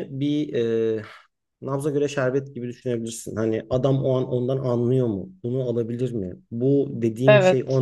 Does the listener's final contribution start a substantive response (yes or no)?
no